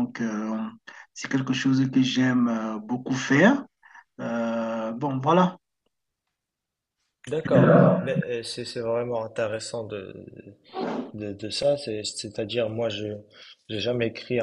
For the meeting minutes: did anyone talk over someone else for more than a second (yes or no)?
no